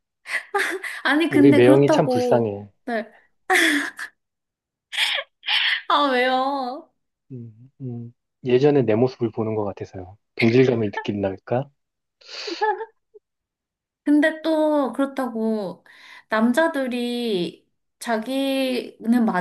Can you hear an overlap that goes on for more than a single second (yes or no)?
yes